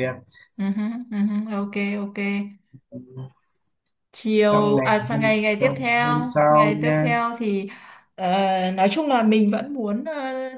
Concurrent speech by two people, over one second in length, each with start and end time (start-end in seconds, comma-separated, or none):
4.4-7.1